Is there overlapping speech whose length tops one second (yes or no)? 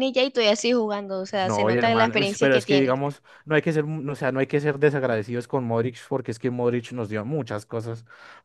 yes